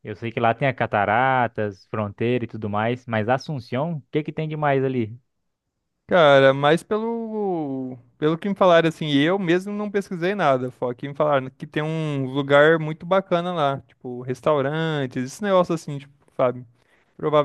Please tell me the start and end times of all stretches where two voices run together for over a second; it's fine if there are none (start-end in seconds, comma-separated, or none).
none